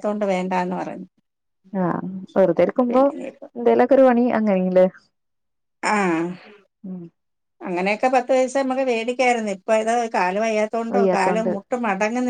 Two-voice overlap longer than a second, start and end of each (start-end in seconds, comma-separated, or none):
none